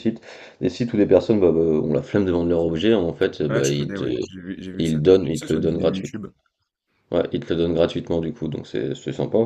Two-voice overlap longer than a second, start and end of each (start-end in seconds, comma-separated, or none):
4.8-6.2